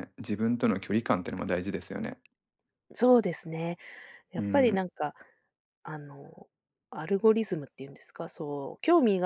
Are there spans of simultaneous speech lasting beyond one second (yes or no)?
no